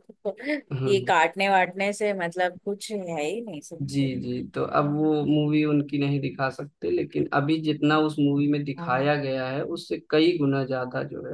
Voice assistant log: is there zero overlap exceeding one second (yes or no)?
yes